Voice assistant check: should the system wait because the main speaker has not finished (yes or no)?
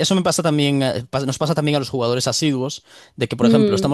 yes